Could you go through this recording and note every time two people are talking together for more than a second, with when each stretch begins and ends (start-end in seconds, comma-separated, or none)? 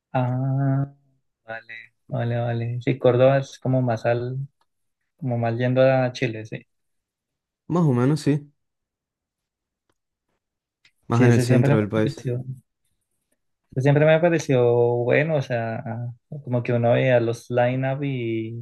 11.1-12.3